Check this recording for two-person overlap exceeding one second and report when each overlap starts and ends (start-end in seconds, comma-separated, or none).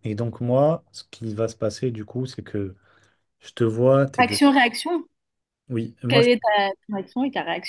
none